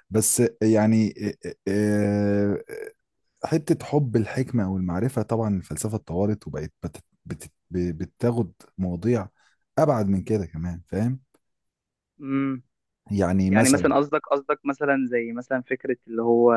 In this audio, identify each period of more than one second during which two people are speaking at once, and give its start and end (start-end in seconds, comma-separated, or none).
none